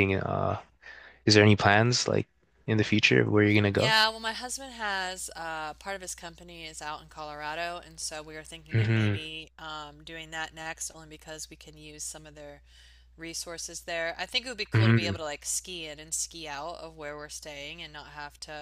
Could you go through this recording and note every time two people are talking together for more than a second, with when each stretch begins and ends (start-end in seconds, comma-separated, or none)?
none